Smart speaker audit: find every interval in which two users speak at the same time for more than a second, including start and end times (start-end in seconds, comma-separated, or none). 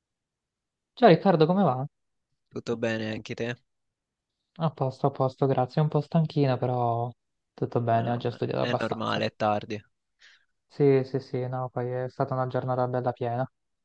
7.9-9.2